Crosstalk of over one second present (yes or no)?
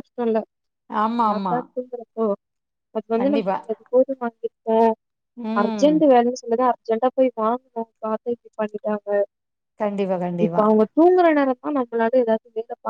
no